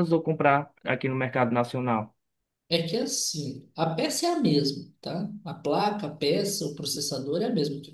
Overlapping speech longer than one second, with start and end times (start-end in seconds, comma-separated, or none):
none